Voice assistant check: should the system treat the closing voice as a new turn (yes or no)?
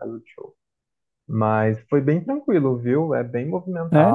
no